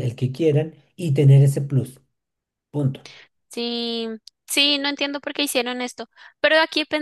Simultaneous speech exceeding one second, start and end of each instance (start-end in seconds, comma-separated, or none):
none